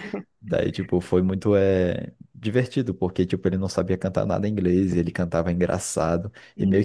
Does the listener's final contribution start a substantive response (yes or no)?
yes